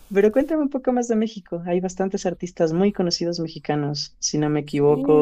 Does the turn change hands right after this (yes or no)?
yes